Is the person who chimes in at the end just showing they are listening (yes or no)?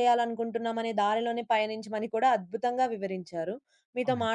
yes